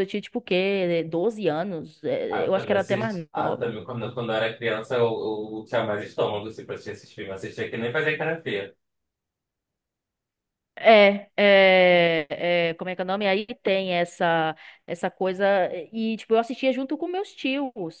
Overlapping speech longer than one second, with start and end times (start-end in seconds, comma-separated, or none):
2.3-3.7